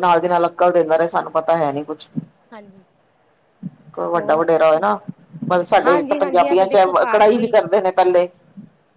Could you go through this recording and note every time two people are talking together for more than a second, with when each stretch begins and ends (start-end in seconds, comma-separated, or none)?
5.8-7.5